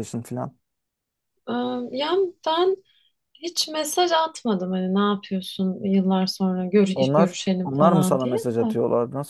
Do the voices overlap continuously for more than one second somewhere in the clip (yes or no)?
yes